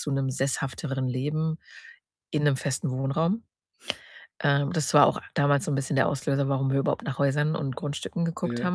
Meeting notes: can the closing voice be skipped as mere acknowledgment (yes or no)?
yes